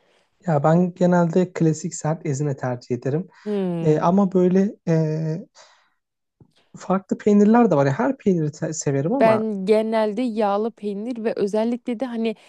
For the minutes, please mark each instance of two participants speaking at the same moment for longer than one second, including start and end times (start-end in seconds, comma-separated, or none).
none